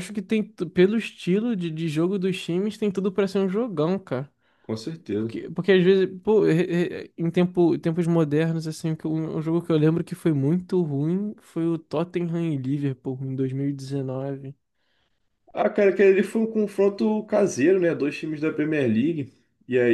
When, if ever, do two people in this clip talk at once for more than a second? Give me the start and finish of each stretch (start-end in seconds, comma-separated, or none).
none